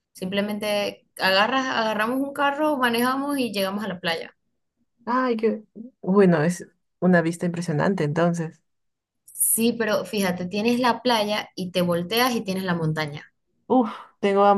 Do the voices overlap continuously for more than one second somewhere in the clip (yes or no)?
no